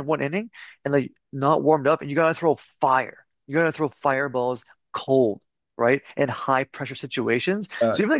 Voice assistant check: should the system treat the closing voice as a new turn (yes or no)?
no